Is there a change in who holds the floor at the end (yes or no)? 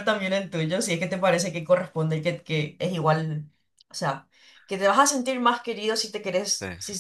no